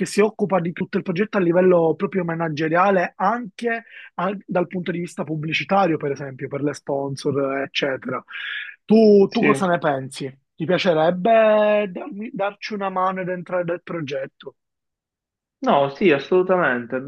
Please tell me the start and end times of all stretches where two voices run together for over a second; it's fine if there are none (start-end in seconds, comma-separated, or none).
none